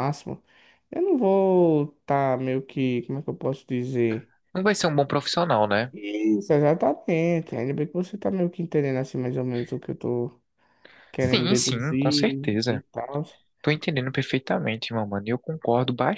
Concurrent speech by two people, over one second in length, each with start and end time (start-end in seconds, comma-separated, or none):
11.2-12.8